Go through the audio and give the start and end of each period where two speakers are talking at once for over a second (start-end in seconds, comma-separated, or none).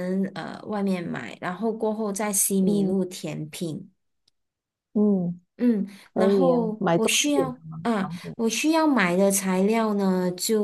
6.1-8.3